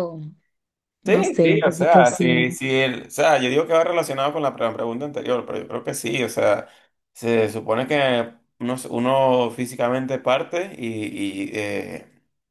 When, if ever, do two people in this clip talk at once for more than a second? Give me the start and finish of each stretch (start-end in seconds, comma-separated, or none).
1.1-2.5